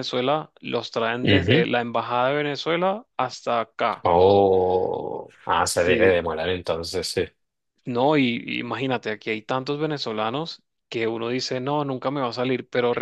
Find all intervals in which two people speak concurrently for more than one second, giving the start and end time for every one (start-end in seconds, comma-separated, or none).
none